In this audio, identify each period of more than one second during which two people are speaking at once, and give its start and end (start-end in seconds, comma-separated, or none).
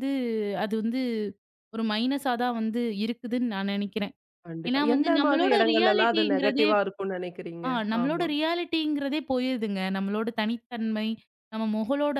4.7-6.7